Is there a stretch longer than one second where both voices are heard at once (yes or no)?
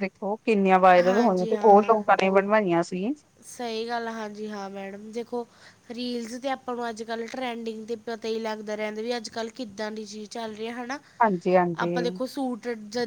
no